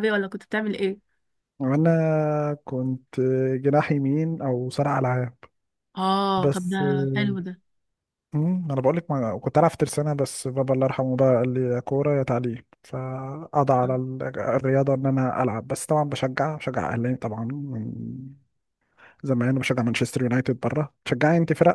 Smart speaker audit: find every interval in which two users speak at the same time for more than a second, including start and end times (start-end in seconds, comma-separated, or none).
none